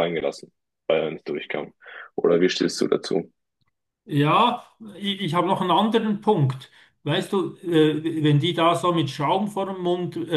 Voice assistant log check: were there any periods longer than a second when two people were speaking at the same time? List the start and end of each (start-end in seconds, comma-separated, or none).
none